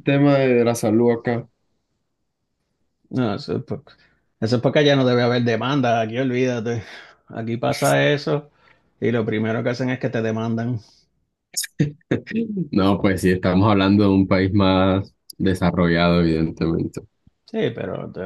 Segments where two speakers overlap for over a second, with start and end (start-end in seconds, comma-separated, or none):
none